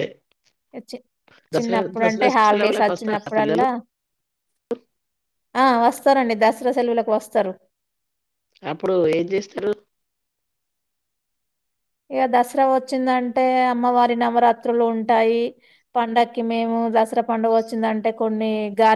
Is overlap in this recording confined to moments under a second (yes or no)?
no